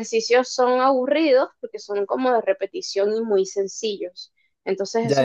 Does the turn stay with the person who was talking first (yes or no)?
no